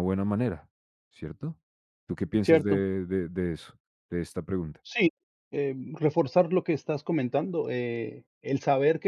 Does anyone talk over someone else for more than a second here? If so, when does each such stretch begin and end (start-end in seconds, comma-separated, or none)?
none